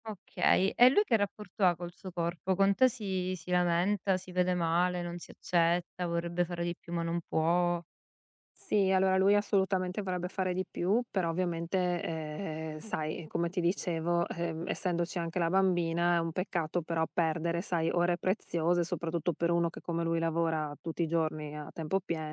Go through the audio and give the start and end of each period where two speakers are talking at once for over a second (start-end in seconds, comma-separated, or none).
none